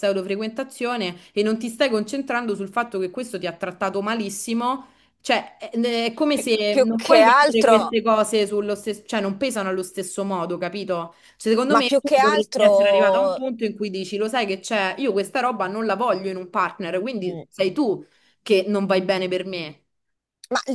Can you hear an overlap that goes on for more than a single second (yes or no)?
yes